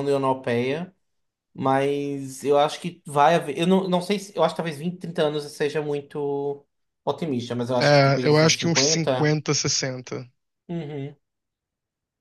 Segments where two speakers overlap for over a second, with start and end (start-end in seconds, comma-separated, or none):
7.8-9.4